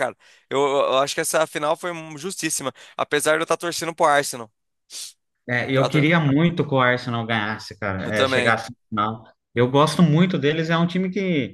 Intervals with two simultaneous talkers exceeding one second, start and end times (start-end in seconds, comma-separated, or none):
none